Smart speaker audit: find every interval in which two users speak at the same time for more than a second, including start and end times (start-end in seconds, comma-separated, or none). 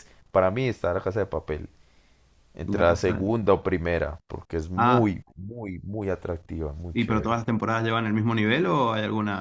none